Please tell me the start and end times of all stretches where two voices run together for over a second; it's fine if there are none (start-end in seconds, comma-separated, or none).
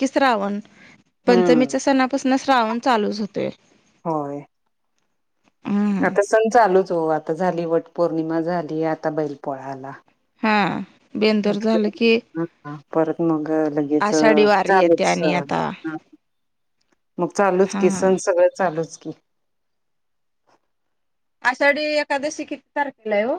14.1-15.7